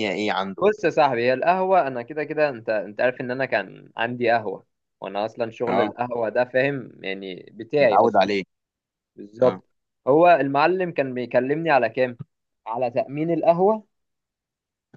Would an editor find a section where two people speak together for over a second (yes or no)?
no